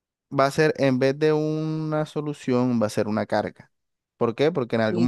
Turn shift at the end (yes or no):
no